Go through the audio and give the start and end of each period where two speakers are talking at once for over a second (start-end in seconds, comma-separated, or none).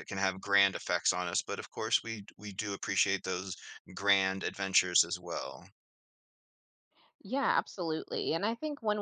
none